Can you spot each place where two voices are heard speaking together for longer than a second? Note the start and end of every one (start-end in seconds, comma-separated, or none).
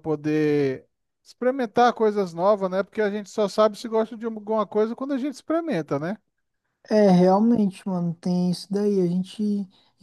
none